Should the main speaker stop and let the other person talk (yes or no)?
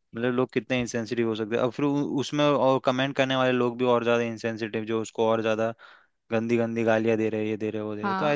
yes